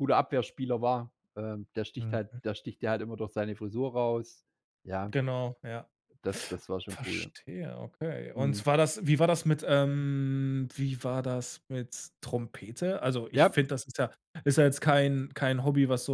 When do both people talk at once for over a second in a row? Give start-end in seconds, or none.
none